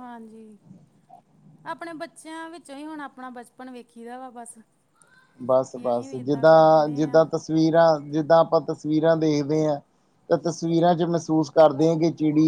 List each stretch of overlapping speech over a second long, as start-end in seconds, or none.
5.7-7.2